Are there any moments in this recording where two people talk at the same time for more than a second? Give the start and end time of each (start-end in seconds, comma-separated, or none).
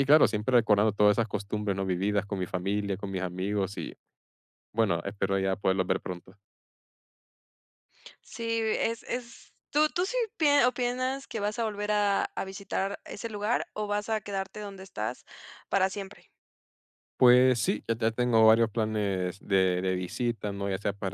none